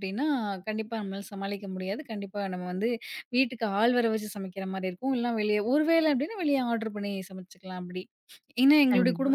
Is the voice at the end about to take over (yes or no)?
no